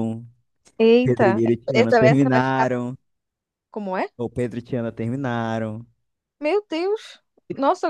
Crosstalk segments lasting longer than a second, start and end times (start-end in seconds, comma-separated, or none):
1.0-2.8